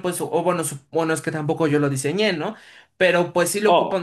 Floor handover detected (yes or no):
no